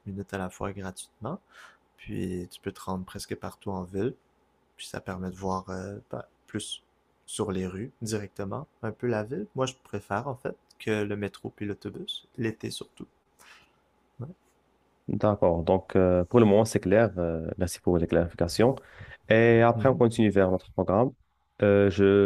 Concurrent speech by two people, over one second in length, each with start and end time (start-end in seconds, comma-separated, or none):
none